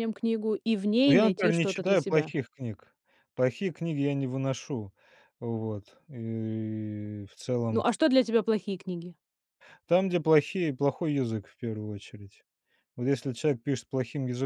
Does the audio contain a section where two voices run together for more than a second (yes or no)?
yes